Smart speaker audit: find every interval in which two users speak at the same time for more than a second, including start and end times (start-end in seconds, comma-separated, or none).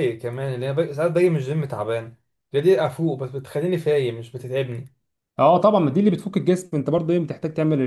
none